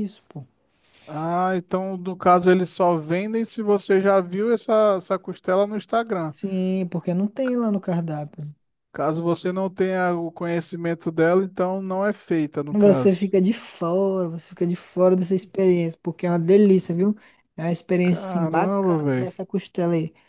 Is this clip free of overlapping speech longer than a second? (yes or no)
no